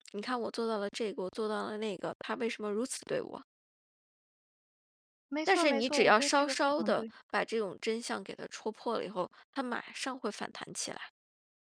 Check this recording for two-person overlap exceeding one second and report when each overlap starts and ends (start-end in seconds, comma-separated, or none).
5.4-7.1